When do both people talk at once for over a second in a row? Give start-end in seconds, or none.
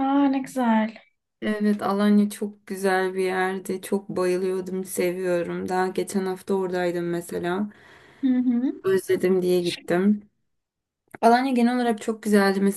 none